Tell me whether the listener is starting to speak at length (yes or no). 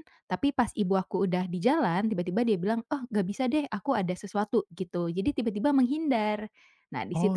no